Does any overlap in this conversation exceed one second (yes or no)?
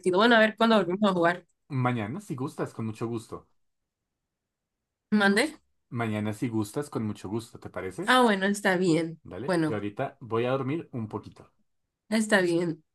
no